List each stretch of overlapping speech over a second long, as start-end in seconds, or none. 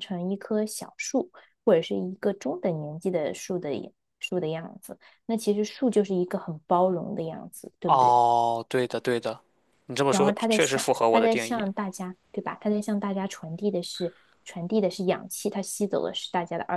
10.1-11.7